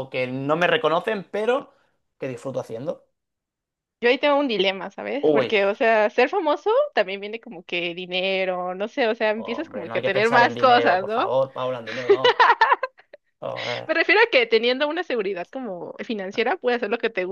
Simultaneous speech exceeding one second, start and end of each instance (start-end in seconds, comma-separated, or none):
9.3-11.3